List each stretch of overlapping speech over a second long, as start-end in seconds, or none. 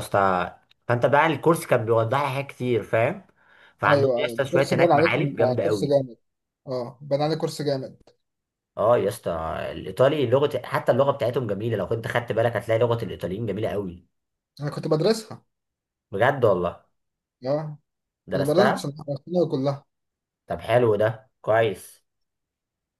3.9-6.0